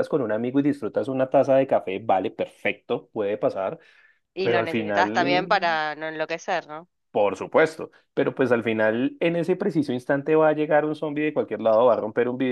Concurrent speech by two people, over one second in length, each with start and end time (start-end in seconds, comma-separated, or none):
4.4-5.8